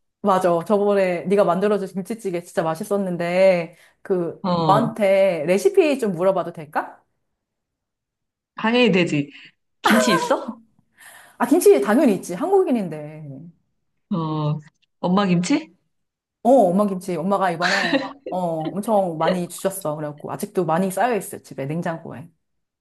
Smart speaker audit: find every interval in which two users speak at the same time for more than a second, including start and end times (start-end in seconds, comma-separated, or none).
none